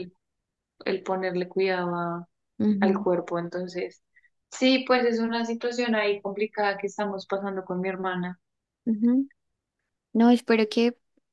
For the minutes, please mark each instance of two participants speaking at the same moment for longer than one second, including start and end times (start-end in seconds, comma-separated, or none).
none